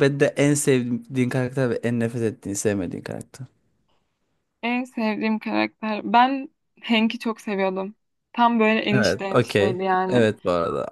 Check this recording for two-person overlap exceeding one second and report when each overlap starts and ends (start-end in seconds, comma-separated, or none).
8.9-10.3